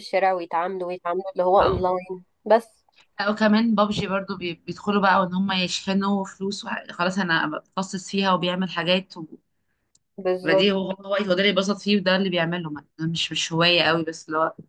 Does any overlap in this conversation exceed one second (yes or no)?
no